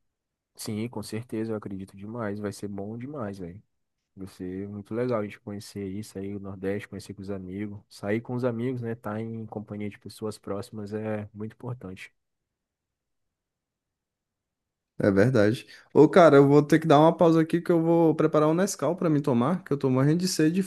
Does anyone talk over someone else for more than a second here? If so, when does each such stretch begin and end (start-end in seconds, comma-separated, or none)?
none